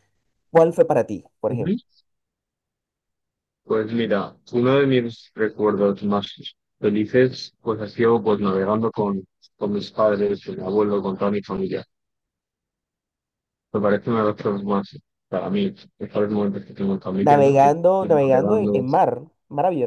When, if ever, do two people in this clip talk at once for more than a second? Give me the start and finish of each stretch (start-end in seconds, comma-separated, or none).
17.3-18.8